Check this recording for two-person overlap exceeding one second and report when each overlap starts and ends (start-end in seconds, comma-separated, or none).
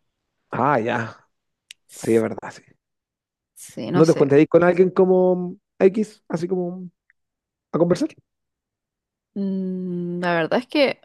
none